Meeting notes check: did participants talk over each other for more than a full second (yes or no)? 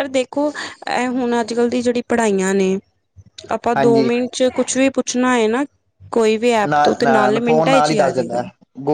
yes